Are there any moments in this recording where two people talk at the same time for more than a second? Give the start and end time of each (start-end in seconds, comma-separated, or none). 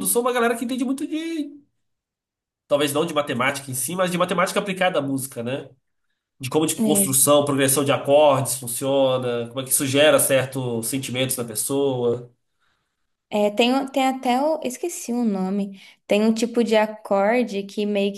none